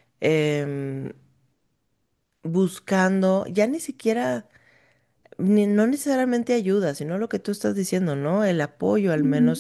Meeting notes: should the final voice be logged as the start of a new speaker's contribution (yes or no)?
yes